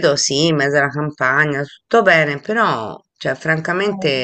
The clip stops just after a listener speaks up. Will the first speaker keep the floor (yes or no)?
yes